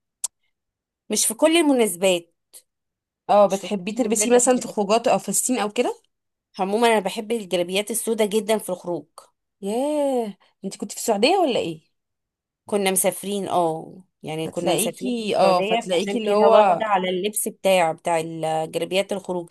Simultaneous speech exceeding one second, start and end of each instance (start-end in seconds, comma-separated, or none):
3.5-4.8, 14.4-16.8